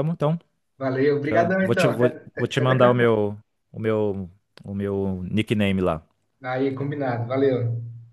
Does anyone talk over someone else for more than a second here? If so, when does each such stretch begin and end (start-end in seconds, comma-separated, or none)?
1.2-3.1